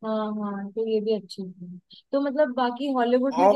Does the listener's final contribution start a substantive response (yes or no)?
no